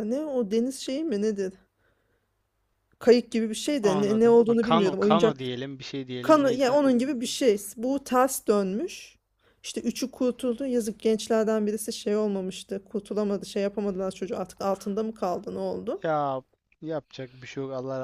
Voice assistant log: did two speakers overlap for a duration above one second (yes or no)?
yes